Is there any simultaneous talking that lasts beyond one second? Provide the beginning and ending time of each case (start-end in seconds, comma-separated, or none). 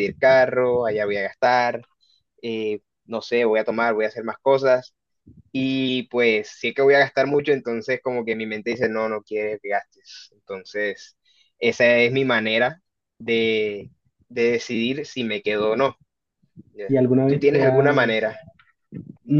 16.9-18.3